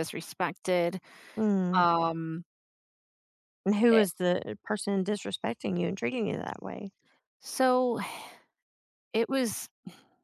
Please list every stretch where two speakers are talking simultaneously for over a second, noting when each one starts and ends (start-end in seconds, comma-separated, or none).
none